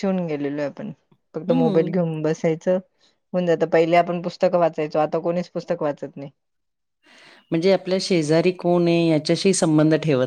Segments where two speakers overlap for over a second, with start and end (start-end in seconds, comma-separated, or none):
none